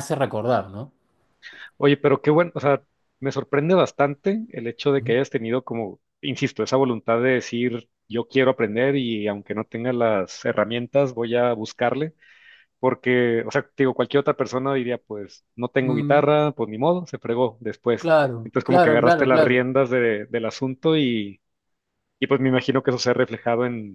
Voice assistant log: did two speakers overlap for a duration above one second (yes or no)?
yes